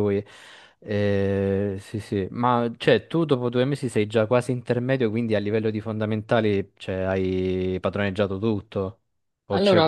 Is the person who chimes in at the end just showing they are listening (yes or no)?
no